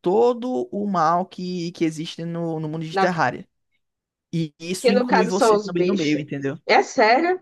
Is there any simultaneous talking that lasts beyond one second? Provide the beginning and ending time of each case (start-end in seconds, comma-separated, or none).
4.8-6.2